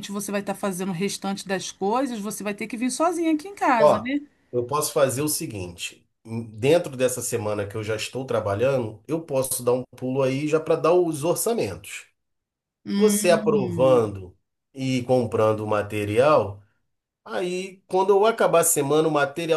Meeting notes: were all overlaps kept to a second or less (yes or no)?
no